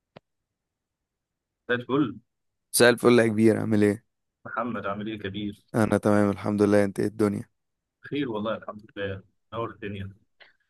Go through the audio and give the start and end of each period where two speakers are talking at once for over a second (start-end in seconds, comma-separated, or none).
none